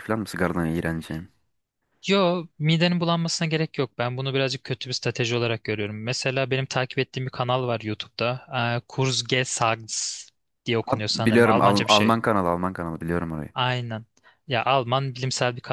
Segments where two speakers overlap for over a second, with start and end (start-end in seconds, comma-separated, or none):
10.9-12.2